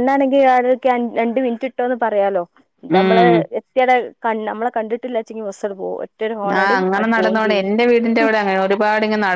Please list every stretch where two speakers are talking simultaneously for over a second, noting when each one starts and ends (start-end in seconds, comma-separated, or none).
none